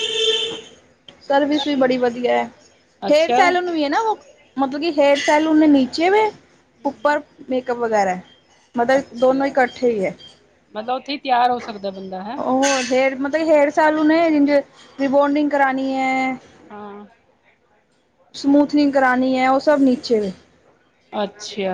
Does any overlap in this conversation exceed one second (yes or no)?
no